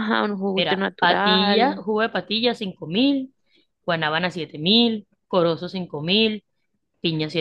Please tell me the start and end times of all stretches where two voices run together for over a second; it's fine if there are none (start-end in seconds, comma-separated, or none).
0.6-1.8